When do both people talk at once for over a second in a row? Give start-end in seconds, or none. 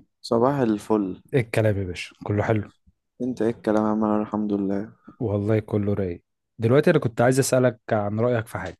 none